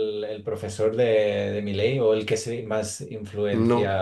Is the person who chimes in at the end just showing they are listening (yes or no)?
yes